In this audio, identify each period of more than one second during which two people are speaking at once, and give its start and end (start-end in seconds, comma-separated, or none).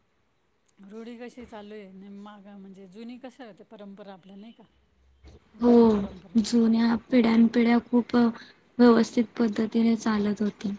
none